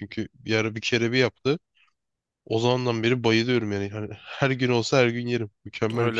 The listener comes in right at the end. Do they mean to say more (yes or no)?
yes